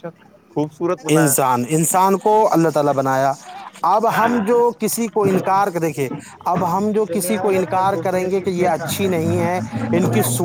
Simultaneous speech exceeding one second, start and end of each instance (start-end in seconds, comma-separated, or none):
7.1-8.9